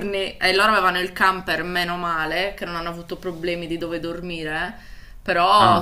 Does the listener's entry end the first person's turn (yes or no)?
no